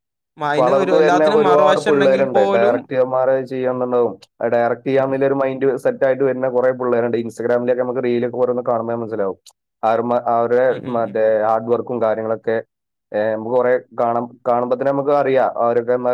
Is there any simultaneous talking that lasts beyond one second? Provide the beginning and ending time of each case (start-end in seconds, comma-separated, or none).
0.6-3.0